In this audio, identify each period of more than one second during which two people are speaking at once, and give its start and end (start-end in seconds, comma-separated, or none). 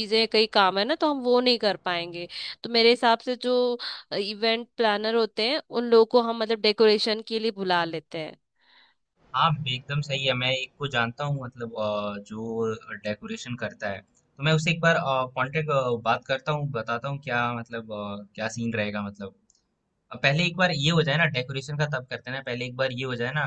none